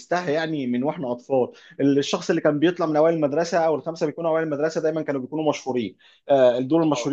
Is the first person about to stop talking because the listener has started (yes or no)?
no